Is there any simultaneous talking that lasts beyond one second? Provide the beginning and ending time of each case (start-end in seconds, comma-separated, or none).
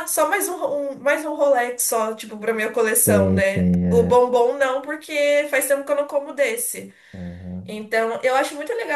3.0-4.2